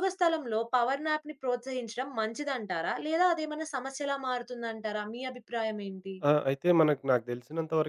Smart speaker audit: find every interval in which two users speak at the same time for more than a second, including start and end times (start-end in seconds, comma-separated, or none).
none